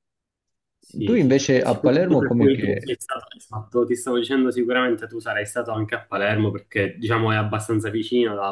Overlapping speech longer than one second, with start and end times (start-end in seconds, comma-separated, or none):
1.1-2.9